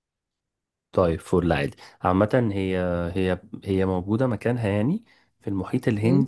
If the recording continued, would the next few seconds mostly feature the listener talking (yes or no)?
no